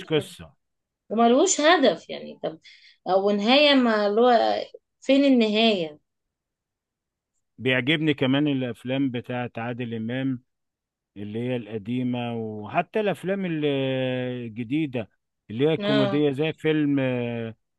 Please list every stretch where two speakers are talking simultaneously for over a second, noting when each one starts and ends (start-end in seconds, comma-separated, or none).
none